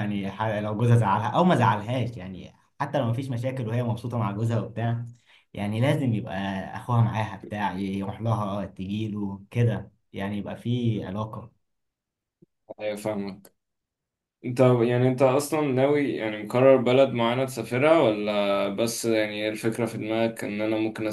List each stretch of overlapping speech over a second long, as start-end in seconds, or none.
none